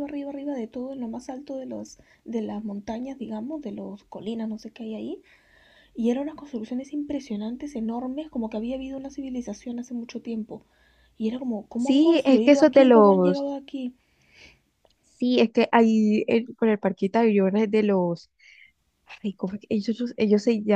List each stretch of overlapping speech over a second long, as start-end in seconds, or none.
11.8-13.5